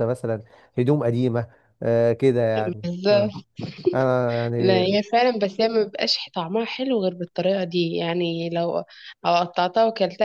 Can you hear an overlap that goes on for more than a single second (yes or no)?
no